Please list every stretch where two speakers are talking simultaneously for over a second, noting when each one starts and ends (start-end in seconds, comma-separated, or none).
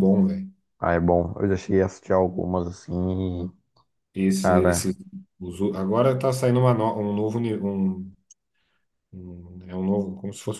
none